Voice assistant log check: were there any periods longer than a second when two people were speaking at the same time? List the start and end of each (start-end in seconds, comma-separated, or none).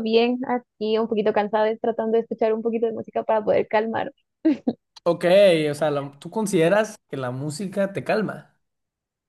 none